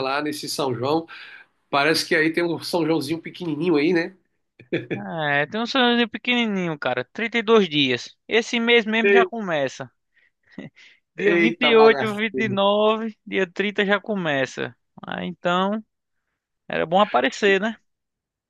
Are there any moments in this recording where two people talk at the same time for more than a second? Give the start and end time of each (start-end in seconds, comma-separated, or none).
11.2-12.6